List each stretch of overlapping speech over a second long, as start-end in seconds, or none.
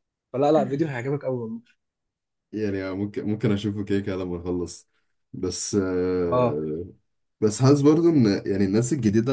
none